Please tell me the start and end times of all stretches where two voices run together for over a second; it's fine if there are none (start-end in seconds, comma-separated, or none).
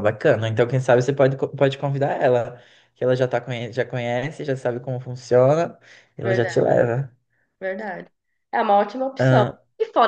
none